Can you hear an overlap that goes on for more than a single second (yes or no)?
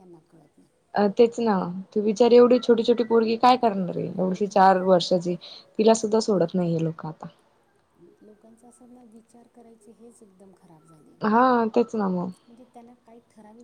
no